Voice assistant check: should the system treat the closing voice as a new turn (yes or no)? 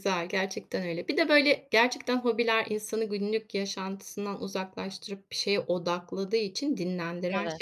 no